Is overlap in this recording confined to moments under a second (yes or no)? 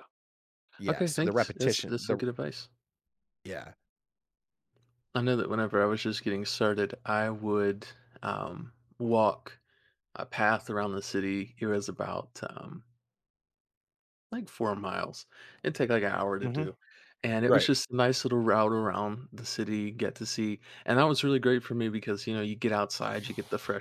no